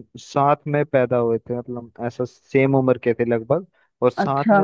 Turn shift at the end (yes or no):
no